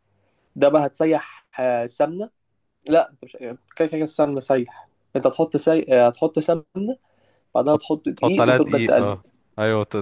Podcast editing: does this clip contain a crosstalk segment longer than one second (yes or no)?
yes